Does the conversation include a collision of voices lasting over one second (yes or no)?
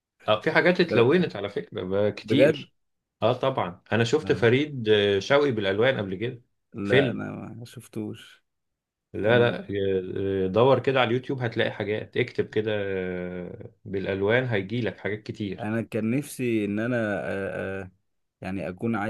no